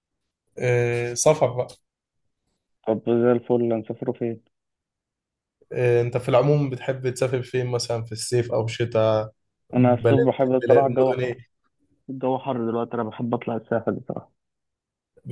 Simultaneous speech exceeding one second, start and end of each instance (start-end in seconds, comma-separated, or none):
9.8-11.3